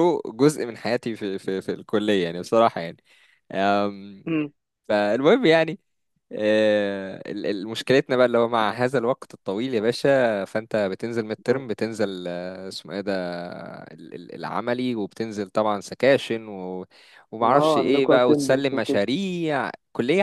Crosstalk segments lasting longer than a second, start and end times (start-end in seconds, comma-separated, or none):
17.4-19.0